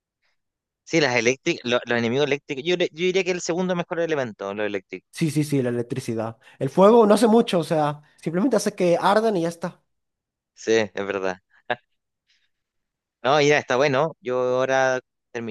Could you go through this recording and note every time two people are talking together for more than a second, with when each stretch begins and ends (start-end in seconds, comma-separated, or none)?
none